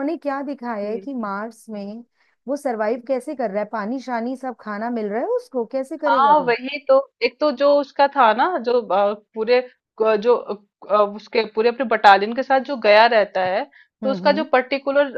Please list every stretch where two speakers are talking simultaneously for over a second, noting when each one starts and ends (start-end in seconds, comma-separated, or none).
none